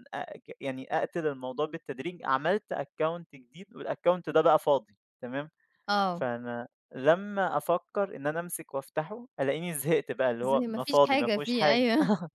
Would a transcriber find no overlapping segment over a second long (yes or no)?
no